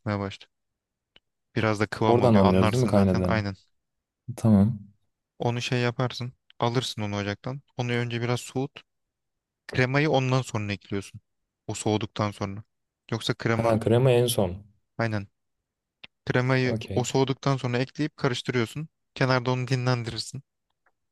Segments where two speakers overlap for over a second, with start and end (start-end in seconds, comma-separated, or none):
2.0-3.4